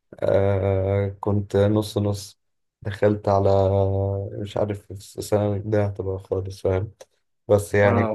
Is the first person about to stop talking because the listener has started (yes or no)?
no